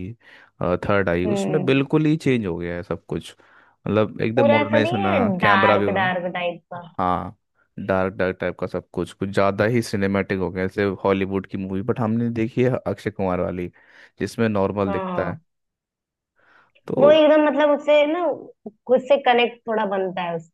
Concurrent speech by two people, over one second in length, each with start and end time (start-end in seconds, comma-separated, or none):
4.3-6.1